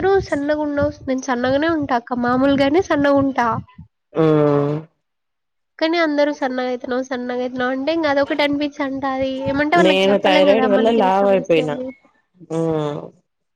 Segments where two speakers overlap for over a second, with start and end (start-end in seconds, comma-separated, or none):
9.9-11.7